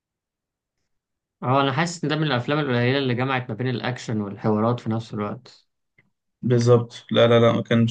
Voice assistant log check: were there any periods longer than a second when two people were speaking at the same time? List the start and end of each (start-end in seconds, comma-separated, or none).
none